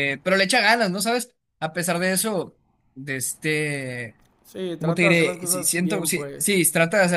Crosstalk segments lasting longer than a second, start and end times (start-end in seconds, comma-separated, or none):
4.8-6.5